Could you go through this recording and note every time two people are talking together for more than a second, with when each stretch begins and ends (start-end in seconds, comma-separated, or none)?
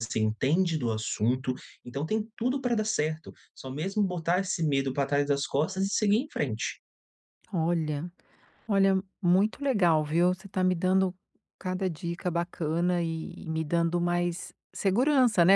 none